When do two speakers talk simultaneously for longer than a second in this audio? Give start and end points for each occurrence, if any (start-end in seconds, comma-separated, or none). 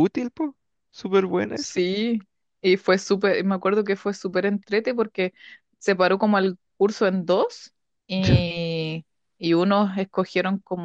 none